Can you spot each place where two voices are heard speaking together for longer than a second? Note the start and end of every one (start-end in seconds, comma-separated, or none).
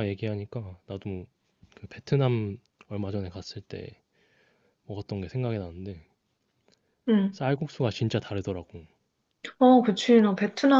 none